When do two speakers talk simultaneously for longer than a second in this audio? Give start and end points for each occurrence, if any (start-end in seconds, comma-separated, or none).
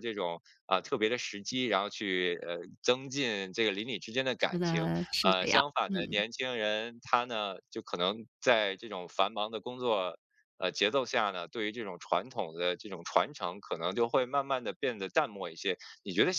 4.5-6.2